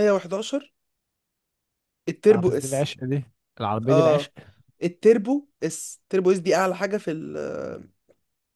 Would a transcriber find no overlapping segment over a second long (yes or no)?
yes